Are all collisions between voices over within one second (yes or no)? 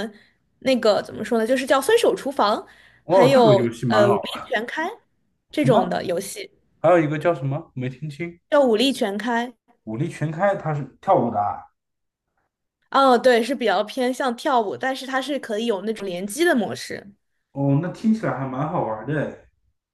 no